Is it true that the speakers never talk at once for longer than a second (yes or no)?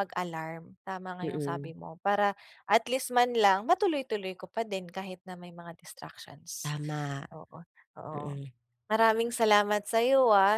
yes